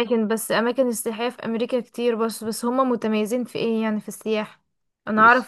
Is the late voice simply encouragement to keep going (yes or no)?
yes